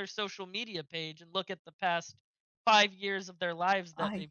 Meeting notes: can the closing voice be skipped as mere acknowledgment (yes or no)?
yes